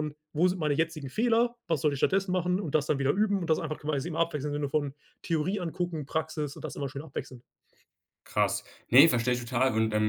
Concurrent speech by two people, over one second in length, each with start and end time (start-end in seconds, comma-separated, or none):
none